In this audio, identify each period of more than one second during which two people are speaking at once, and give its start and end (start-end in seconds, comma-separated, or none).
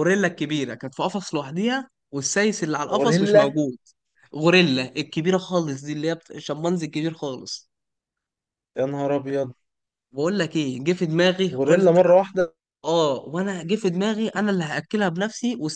none